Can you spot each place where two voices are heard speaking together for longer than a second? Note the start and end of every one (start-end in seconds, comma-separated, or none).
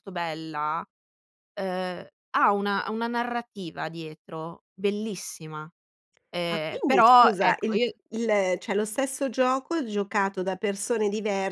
6.5-8.0